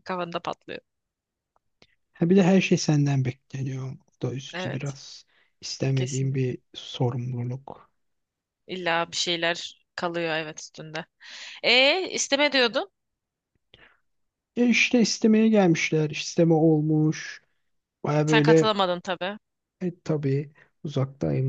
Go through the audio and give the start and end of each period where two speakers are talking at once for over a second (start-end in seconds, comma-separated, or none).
none